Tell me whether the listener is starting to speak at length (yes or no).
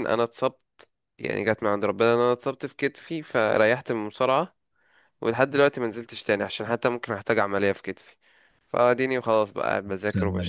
no